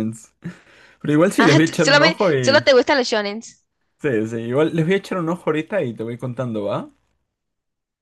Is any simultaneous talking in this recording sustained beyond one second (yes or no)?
yes